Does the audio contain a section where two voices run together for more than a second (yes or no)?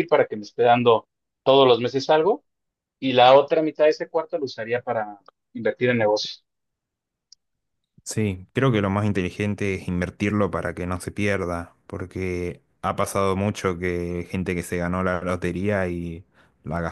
no